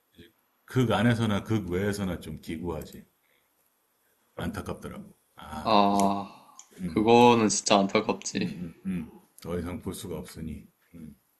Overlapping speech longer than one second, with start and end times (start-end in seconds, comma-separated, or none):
none